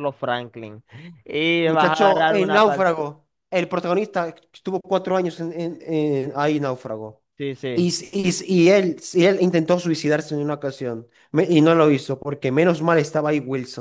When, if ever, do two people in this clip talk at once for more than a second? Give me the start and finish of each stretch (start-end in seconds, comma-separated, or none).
1.6-2.9